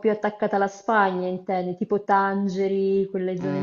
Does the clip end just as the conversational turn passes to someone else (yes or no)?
yes